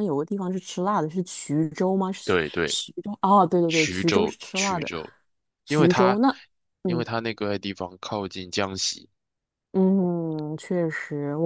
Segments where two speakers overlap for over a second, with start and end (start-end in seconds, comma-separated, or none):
3.7-4.9